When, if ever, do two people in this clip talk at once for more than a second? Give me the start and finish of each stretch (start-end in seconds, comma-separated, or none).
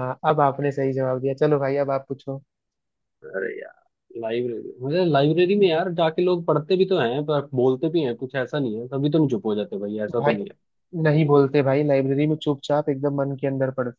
none